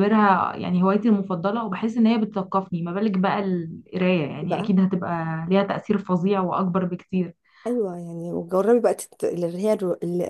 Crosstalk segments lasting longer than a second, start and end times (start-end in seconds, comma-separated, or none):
none